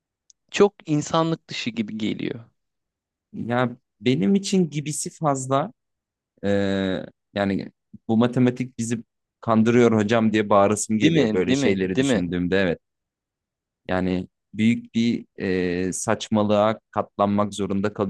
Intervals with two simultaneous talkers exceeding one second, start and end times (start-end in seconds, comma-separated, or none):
11.0-12.2